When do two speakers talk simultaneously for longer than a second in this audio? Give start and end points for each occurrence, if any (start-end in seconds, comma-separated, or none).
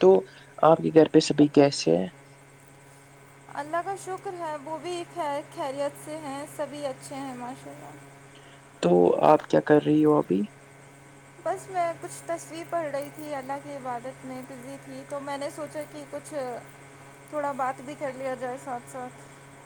none